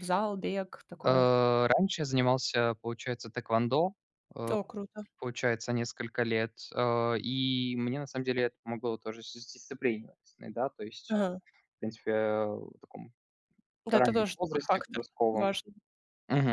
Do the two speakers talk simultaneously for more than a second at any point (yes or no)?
yes